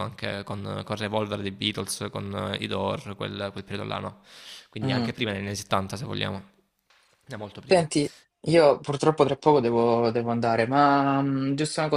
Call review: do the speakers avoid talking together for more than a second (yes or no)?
yes